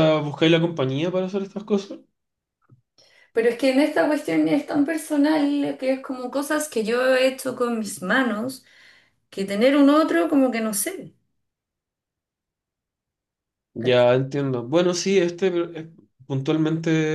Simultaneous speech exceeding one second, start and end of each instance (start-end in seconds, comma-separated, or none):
none